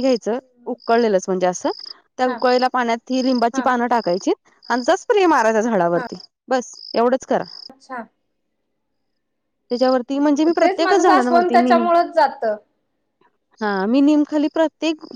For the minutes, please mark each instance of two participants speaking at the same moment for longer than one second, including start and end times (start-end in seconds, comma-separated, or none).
10.1-11.9